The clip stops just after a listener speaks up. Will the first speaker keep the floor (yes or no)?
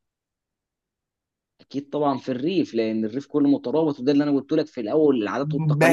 no